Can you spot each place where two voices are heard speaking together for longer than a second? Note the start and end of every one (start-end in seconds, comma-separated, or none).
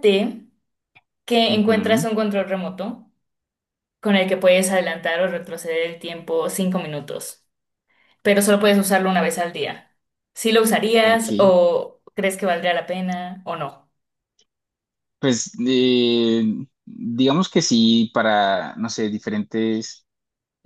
none